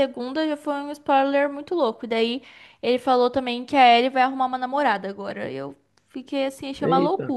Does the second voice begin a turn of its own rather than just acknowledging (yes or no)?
yes